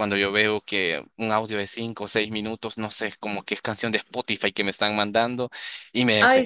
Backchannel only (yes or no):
yes